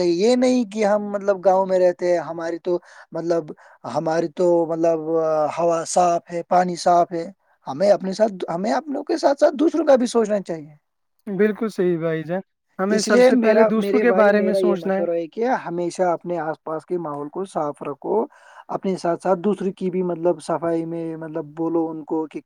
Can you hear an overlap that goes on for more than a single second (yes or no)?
yes